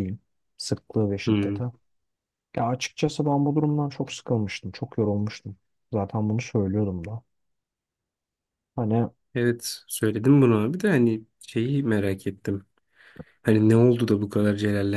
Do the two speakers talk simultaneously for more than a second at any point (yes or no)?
no